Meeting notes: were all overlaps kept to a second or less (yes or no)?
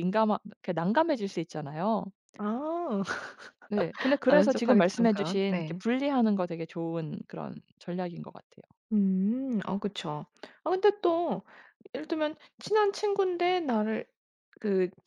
no